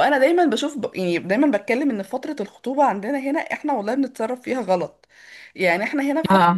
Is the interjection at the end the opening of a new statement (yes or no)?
no